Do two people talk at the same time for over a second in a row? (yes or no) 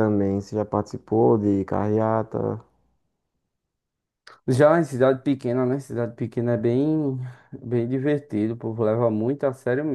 no